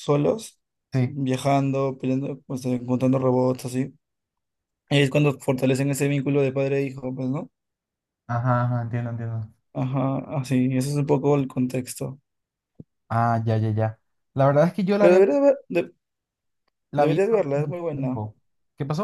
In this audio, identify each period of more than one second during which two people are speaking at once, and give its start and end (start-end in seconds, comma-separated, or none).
17.0-18.2